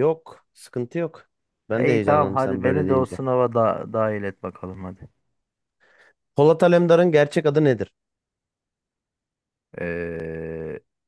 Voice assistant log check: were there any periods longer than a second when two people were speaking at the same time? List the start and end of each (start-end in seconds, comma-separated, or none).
1.8-3.2